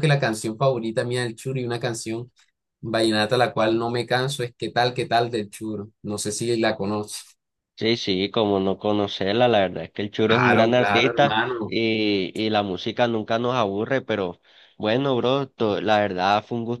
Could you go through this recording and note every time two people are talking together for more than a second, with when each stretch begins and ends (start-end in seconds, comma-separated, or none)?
10.2-11.8